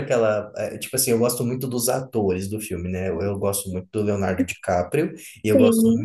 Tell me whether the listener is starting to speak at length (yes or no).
no